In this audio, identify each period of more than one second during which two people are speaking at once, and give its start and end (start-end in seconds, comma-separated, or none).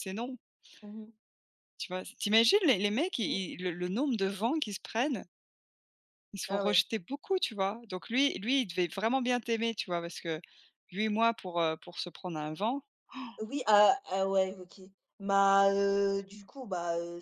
none